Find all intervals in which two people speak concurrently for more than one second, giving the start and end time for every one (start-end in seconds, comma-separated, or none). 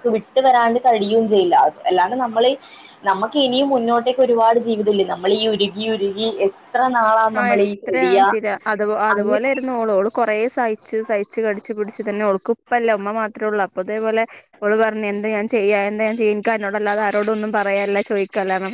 none